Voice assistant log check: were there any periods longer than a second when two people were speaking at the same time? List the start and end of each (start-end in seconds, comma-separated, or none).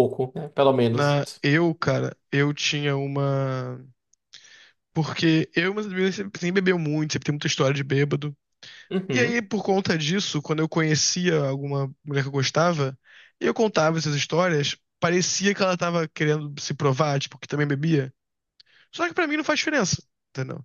none